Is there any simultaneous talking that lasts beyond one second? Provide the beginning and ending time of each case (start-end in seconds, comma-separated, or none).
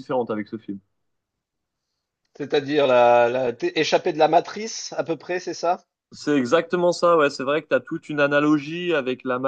none